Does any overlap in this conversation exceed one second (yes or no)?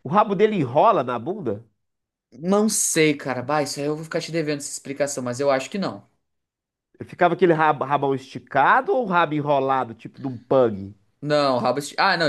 no